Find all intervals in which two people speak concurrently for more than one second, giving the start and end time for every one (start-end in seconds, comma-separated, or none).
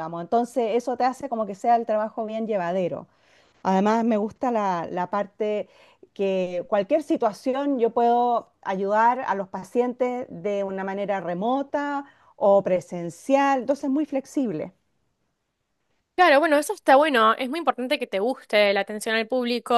none